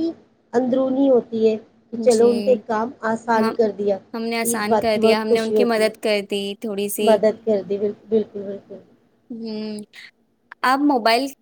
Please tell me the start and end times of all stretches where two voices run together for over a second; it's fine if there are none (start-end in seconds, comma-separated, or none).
4.4-5.9